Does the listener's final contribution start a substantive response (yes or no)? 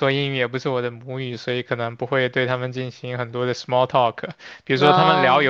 no